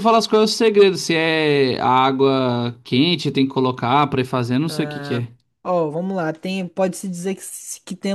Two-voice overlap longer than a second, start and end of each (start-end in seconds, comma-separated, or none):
none